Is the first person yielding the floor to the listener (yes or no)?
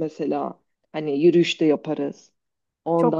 yes